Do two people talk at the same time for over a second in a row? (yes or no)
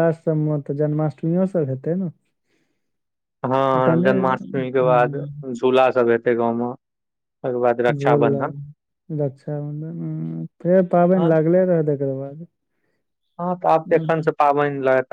yes